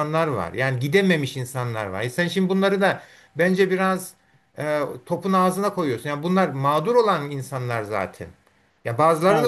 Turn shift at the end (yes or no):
no